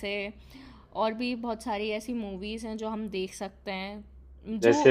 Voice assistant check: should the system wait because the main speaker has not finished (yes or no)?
no